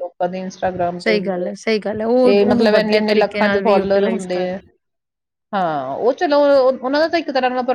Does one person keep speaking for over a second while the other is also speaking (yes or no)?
yes